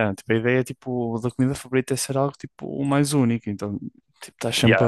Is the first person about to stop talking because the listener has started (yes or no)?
no